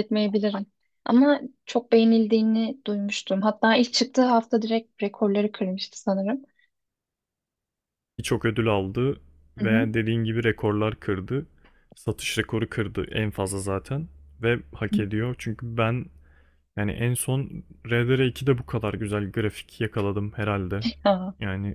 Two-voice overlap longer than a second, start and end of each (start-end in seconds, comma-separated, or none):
none